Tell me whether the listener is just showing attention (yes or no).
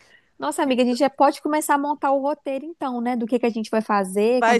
no